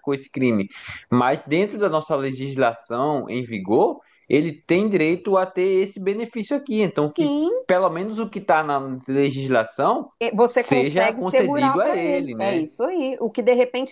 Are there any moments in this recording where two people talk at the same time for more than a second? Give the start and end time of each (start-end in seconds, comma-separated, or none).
10.5-12.7